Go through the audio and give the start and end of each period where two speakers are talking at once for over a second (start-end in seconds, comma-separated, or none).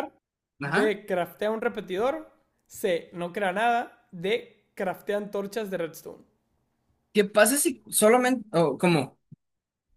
none